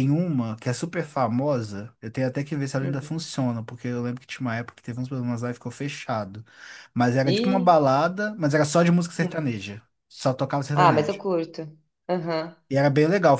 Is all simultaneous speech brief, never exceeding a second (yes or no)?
yes